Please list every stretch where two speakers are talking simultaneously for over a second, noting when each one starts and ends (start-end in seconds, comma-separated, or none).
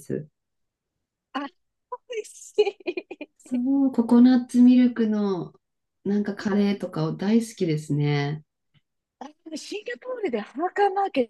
none